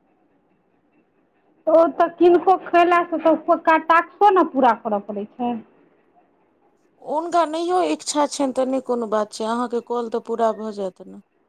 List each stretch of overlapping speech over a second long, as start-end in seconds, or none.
none